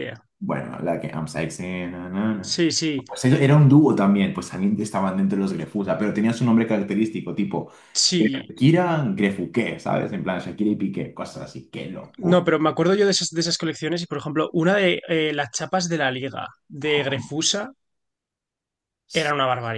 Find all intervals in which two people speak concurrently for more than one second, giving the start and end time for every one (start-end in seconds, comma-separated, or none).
none